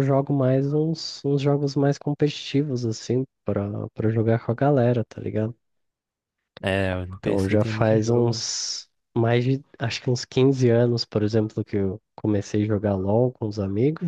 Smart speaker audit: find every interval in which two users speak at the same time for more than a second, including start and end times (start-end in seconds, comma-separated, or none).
7.2-8.4